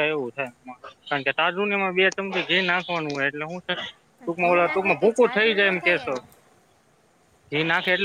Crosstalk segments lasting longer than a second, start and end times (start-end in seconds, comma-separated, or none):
4.2-6.2